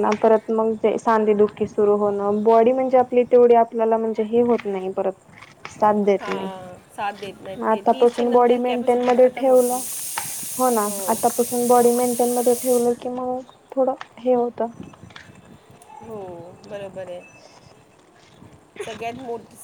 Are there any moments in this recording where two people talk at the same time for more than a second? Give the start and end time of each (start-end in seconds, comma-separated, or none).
7.0-9.7